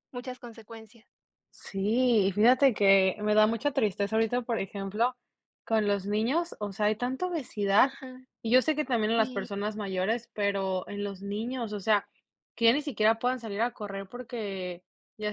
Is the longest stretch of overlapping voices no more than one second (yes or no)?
yes